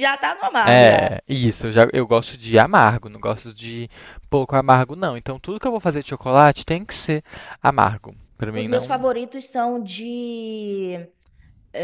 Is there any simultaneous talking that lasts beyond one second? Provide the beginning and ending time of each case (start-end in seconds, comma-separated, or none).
none